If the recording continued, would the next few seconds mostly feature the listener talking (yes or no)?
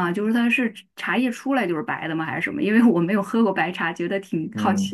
yes